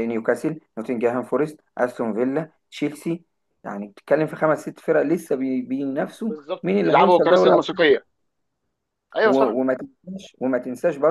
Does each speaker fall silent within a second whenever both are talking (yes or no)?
no